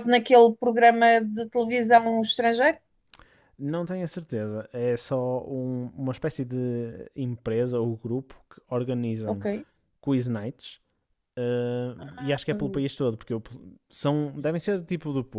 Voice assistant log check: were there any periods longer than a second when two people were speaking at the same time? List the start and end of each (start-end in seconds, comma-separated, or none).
none